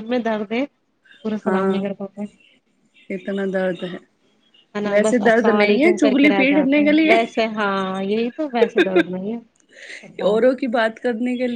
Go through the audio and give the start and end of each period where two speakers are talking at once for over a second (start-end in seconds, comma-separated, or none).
4.9-7.1